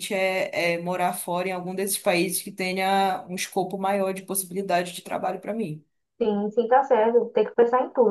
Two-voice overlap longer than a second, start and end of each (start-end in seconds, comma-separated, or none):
none